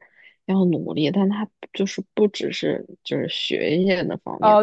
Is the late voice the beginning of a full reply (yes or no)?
yes